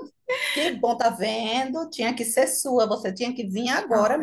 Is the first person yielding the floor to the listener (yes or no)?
yes